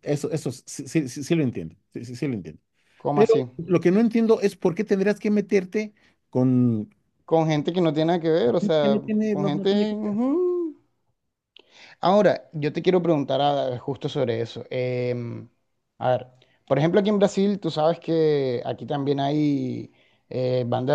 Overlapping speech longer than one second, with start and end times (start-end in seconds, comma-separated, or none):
8.8-10.2